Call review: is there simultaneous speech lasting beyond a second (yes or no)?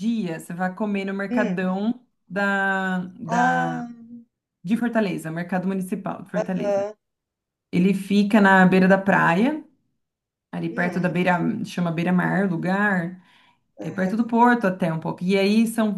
no